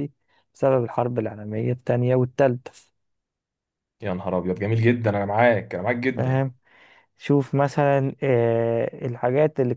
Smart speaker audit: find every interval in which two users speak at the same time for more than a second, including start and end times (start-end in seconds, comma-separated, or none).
none